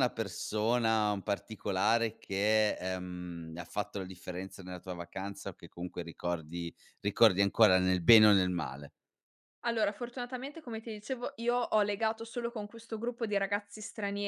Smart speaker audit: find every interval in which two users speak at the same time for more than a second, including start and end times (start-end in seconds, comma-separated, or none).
none